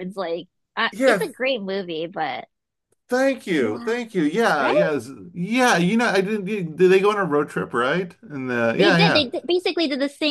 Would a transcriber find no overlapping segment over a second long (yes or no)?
yes